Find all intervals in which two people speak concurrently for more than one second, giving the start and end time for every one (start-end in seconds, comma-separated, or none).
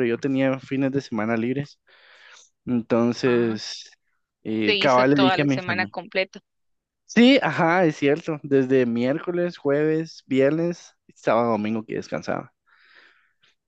4.6-5.9